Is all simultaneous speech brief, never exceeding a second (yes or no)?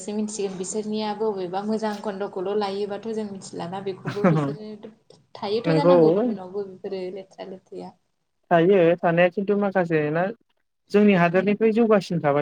yes